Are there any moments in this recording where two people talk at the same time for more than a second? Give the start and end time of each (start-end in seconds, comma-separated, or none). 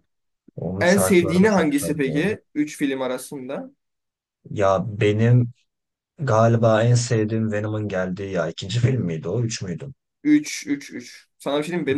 0.8-2.3